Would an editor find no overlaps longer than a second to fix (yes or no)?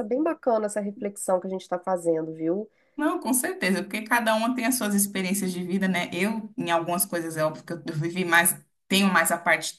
yes